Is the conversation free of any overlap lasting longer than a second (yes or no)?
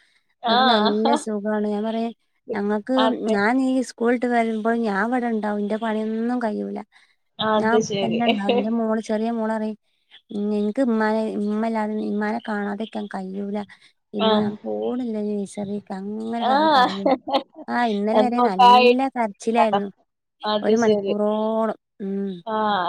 yes